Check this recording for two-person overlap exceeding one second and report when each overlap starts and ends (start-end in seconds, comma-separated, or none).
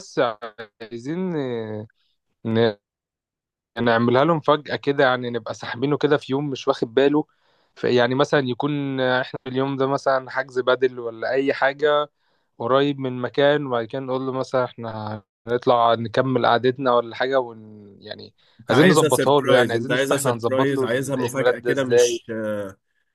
18.7-22.2